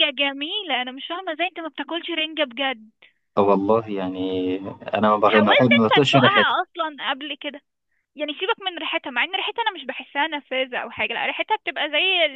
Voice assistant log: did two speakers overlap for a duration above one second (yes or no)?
yes